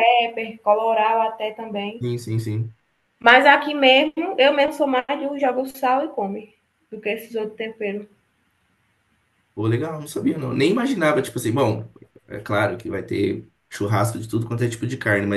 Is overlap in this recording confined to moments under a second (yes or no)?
yes